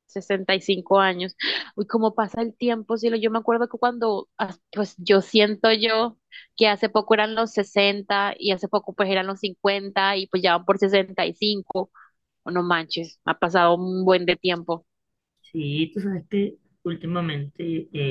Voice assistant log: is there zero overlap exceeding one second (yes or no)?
yes